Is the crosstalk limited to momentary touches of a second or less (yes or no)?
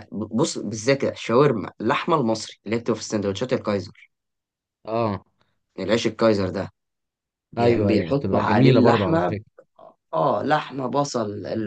no